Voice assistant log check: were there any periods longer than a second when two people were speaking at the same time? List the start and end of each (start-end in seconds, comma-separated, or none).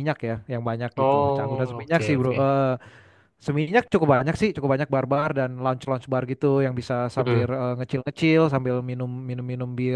1.0-2.5